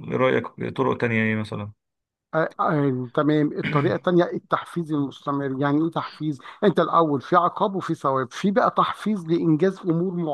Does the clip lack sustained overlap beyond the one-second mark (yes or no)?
yes